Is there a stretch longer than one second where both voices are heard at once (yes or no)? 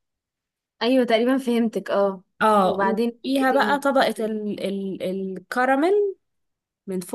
yes